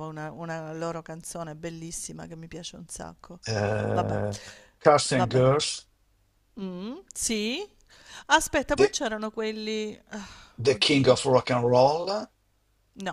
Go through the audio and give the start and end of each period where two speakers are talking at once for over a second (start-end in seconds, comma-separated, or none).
none